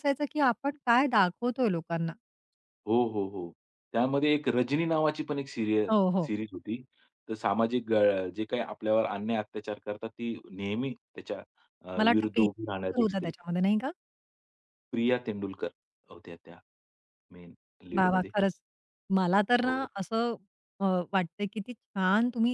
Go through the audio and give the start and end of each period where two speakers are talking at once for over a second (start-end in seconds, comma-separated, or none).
12.0-13.3